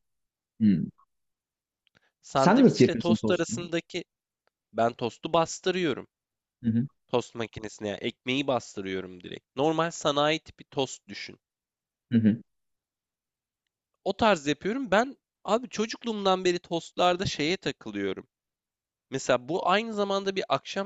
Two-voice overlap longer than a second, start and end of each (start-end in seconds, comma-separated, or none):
2.3-3.7